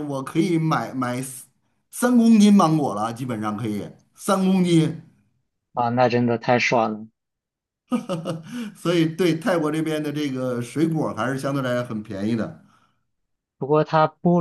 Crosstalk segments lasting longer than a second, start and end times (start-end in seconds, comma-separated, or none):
none